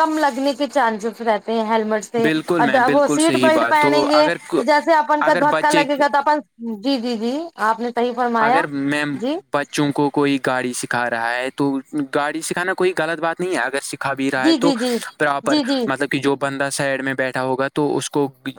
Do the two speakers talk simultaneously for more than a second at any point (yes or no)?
yes